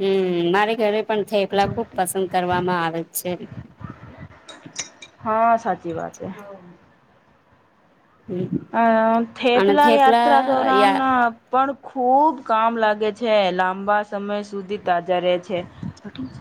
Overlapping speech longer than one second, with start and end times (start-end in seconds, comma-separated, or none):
9.6-11.0